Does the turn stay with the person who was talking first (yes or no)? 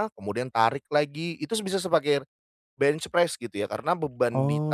yes